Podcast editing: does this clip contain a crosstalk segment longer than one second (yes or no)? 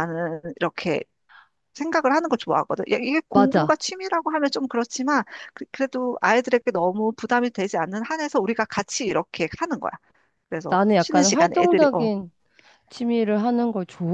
yes